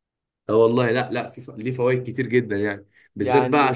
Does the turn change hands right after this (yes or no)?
no